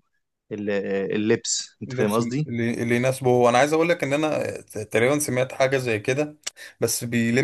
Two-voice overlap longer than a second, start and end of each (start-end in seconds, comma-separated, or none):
none